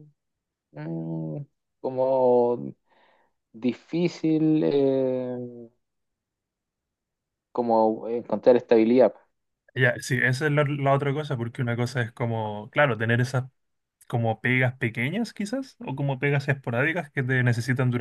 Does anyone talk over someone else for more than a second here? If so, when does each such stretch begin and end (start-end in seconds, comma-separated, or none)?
none